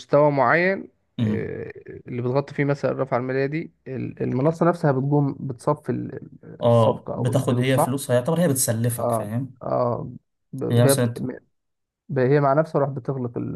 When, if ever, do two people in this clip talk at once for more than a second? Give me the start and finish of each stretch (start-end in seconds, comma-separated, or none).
6.7-8.0